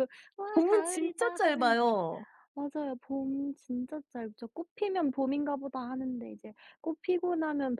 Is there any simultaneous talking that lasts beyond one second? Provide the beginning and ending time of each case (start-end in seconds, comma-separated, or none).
0.5-1.8